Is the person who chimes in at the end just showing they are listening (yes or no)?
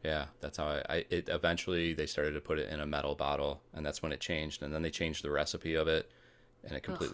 yes